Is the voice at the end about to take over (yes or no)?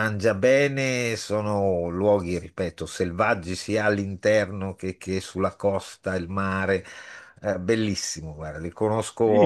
yes